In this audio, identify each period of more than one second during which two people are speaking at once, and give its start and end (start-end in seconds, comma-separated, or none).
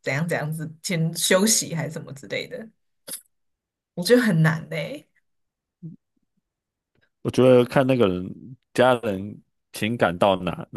none